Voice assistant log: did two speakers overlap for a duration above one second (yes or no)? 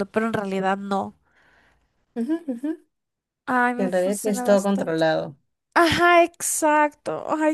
yes